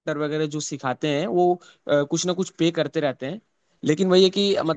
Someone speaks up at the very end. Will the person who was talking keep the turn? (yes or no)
yes